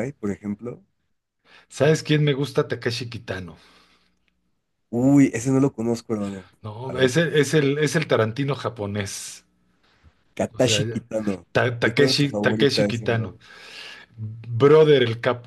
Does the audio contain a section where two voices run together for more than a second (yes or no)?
yes